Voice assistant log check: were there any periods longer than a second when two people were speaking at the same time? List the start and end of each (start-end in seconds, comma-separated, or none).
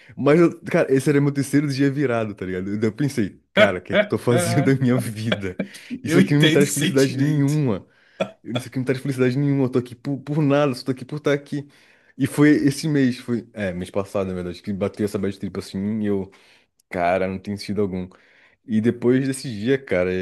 6.1-7.6